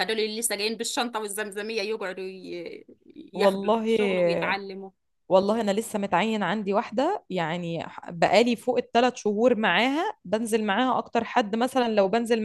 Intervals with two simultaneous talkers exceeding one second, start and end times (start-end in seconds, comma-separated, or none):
none